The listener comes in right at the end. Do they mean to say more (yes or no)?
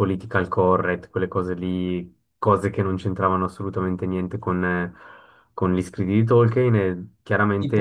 no